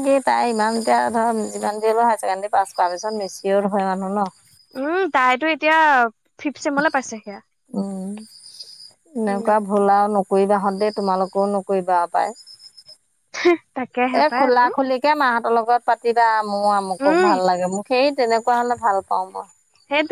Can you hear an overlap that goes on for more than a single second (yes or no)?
no